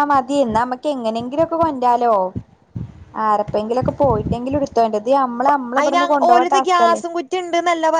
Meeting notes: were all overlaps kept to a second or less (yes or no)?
yes